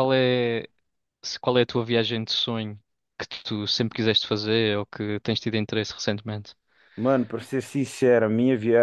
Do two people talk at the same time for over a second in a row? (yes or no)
no